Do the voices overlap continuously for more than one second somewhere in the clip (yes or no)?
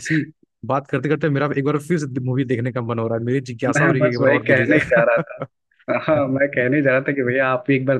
yes